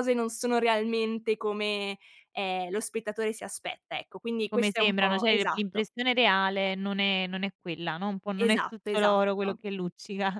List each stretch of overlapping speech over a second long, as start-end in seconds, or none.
4.5-5.9, 8.3-9.6